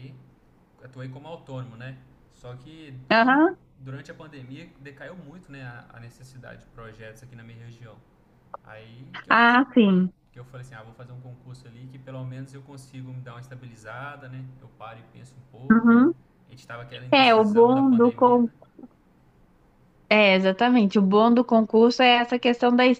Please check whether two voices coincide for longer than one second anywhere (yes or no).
yes